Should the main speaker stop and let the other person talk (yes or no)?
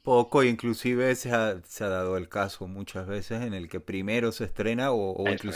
no